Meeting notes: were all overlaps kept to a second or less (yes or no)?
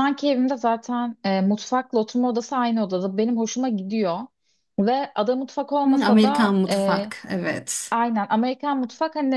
no